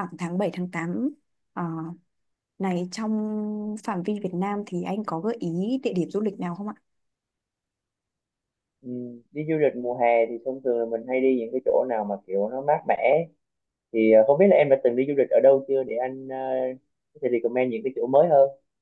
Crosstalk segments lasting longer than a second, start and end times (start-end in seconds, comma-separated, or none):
none